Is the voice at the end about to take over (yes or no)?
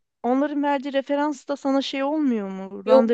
yes